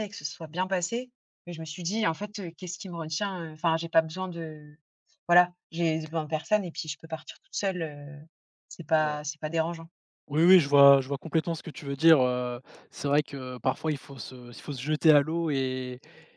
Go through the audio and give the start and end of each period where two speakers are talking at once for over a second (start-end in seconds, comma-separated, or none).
none